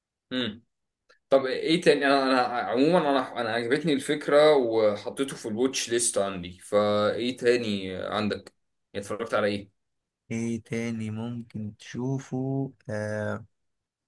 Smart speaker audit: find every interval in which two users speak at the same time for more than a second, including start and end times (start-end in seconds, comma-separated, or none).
none